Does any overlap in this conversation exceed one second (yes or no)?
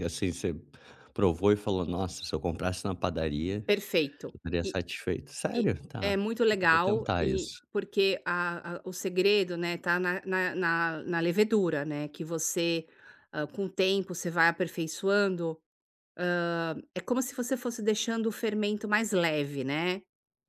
yes